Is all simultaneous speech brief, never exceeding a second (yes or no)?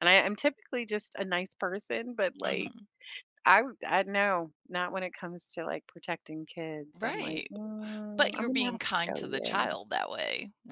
no